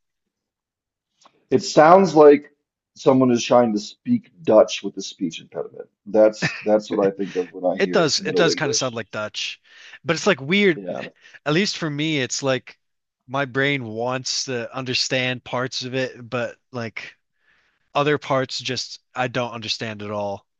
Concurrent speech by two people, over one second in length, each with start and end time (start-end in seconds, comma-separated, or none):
7.8-9.0